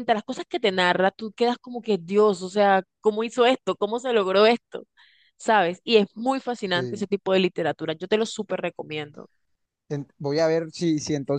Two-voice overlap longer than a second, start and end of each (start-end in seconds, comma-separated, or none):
none